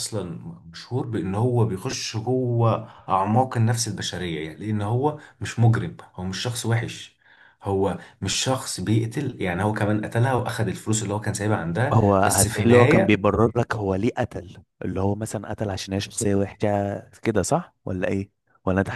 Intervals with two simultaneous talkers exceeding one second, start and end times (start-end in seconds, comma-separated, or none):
11.9-13.2